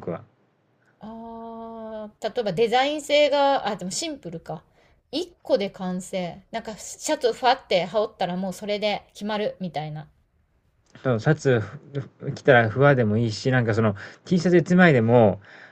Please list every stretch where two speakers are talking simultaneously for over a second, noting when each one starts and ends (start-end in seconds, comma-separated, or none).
none